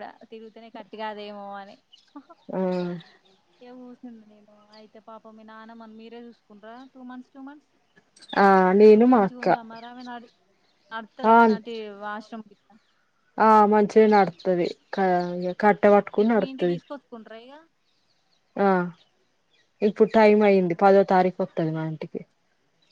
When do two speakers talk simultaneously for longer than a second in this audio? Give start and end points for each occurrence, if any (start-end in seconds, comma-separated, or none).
none